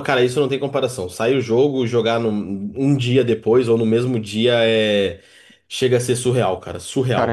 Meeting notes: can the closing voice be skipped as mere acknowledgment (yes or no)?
no